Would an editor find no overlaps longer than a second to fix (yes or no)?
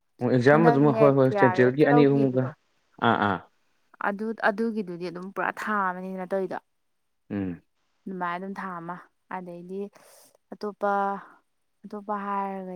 no